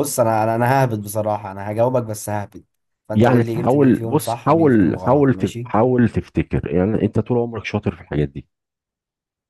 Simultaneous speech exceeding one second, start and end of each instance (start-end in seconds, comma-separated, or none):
3.2-5.7